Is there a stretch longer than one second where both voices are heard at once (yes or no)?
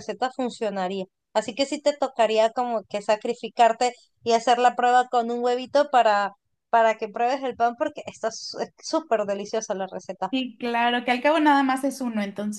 no